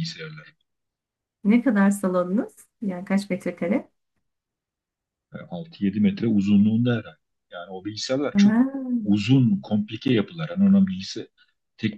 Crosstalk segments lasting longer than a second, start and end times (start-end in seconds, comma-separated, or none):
none